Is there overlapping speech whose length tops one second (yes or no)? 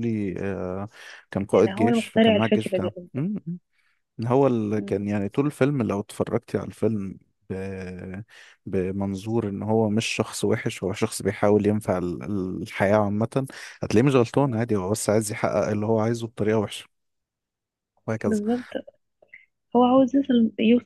yes